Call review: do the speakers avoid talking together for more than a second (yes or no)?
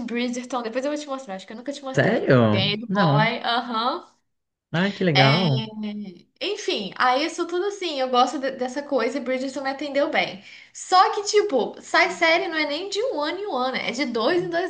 no